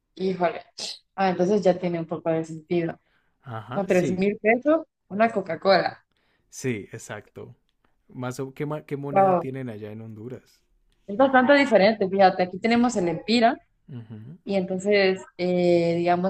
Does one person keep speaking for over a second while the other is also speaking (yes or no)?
no